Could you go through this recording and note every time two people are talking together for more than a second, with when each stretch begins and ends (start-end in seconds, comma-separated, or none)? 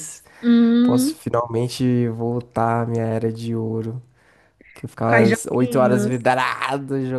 5.0-6.3